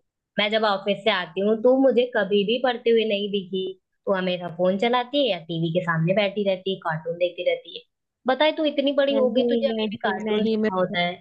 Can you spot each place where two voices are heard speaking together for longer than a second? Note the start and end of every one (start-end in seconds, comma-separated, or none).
9.1-10.7